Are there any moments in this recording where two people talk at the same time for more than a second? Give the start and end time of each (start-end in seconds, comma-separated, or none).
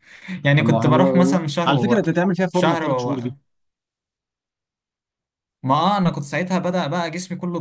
0.6-3.3